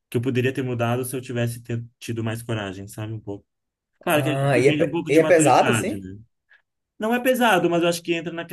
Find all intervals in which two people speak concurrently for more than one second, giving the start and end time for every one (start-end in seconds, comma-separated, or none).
4.1-6.1